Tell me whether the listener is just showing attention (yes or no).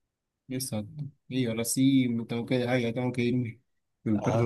yes